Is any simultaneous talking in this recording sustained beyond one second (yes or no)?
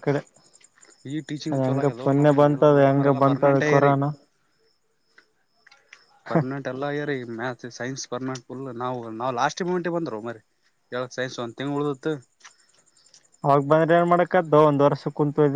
yes